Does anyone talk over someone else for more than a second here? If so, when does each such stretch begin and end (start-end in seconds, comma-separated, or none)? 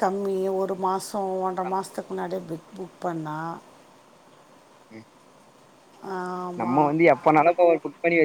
none